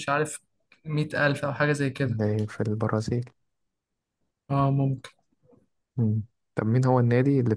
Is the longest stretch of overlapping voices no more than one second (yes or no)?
yes